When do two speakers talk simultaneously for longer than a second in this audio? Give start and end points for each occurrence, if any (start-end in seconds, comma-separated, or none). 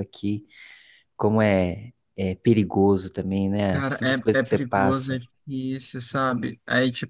3.7-5.2